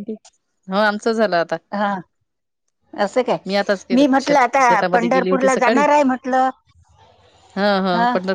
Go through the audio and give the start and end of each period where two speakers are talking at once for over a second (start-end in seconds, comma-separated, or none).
4.0-5.8